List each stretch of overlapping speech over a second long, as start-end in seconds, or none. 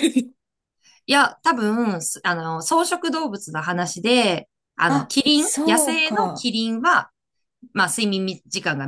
4.8-6.5